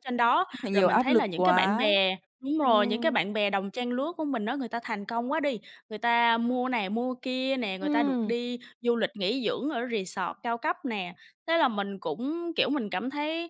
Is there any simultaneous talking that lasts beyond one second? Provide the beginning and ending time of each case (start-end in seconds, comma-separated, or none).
0.5-1.9